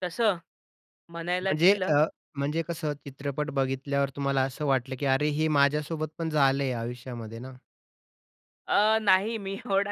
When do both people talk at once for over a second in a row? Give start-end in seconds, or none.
none